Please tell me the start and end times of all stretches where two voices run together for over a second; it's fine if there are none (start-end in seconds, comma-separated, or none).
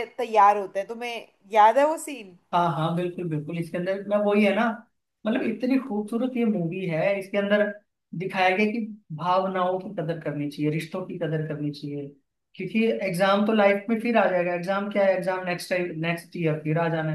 none